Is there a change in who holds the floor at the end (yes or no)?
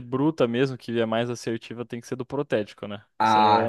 yes